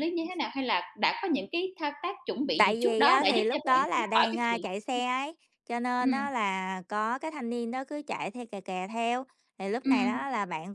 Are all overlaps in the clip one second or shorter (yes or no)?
no